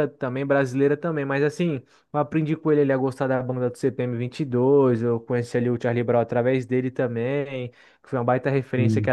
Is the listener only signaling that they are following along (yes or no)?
yes